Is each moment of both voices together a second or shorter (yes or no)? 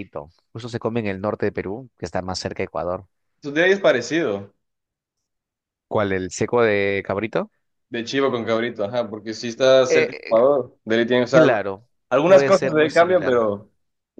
no